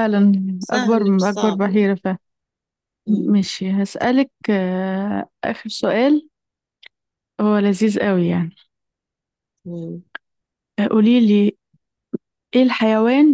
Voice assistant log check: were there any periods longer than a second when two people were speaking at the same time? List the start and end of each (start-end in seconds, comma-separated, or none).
0.7-1.9